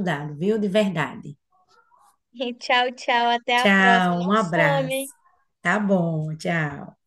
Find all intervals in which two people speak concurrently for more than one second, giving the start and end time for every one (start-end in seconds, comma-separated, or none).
3.6-5.1